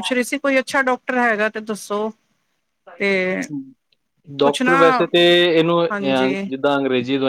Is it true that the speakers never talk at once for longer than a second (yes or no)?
yes